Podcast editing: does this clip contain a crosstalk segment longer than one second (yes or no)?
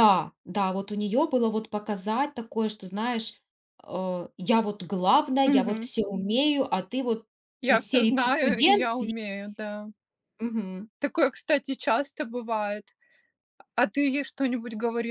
yes